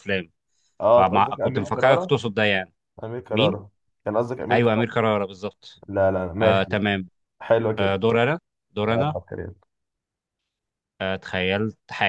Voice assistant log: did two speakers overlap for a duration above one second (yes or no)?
yes